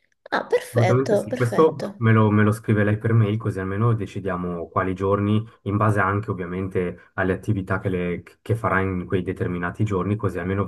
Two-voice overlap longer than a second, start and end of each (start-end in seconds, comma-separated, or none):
0.7-2.0